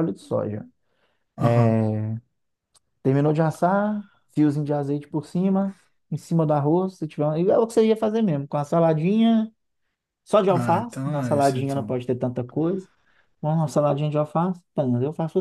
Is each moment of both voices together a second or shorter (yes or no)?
no